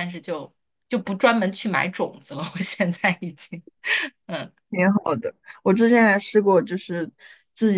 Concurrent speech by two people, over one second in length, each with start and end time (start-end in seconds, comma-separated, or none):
none